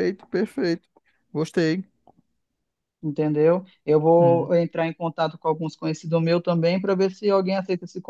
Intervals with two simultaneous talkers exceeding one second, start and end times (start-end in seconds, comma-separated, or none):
none